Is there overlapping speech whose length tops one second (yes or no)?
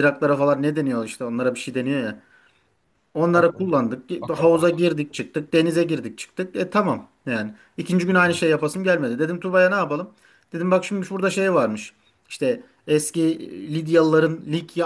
yes